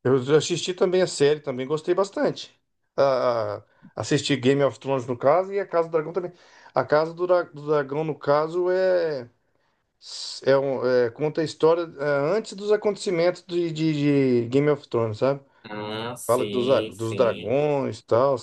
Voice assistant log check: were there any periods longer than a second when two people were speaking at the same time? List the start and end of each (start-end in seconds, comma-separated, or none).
16.3-17.6